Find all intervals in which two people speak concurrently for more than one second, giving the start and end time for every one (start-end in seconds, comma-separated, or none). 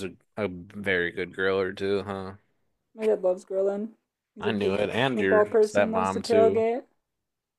4.4-6.7